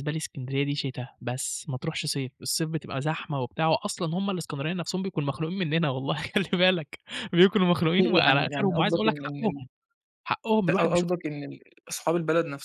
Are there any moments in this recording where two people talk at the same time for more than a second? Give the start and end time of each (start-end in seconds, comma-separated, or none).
8.0-9.6